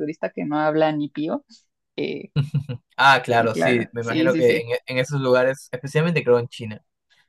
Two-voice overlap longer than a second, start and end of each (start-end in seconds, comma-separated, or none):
3.4-4.7